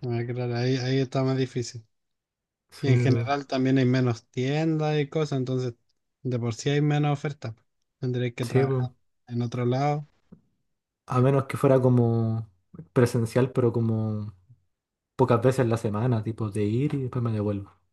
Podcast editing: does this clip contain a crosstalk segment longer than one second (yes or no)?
no